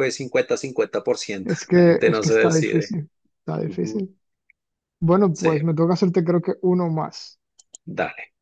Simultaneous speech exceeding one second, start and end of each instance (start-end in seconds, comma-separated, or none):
1.4-3.0